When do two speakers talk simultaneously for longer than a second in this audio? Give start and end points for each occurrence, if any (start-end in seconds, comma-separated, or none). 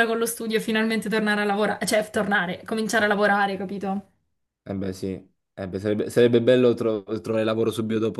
none